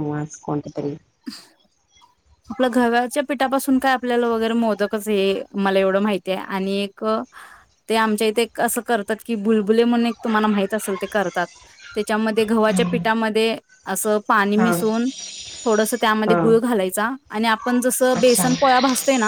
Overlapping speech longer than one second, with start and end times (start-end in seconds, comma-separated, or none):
none